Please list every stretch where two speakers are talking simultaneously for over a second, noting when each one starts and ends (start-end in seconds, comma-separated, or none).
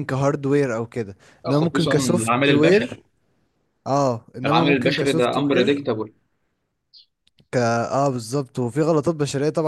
1.5-2.9, 4.5-5.8